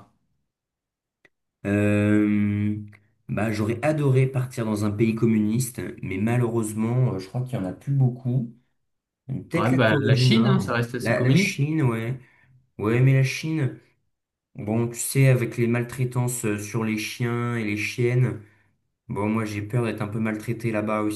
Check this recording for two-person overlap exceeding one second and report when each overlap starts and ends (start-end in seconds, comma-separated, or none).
9.5-11.6